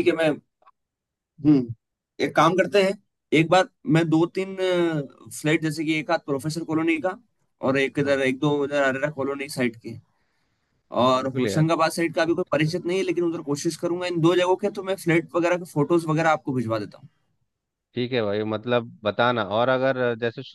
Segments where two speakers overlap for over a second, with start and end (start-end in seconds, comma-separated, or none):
none